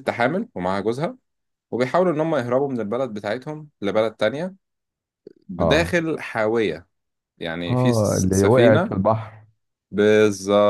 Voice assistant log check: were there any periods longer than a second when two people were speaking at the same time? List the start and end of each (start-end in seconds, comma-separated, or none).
7.7-8.9